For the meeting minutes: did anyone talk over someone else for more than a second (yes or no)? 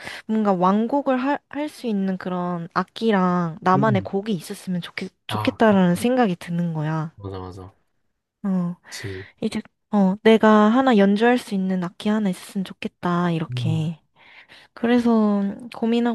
no